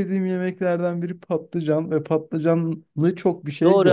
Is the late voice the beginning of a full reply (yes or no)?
yes